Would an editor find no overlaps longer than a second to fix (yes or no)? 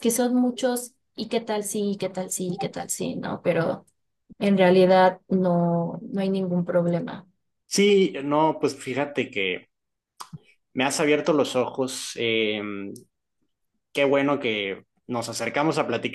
yes